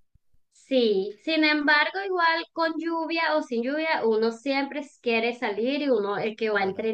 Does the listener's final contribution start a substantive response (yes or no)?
no